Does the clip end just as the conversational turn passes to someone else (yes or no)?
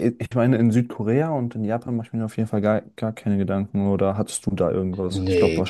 yes